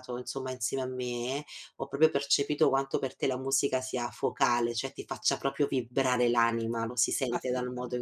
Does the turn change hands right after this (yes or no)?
no